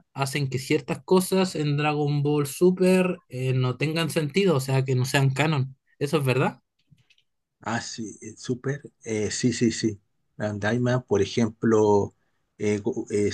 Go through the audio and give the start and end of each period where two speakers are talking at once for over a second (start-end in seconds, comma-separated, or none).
none